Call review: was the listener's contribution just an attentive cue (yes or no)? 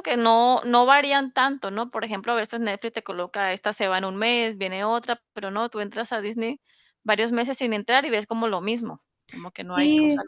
no